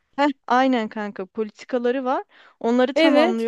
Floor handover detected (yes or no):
no